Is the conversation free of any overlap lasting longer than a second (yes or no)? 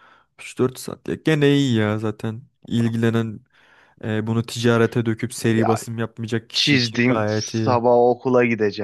no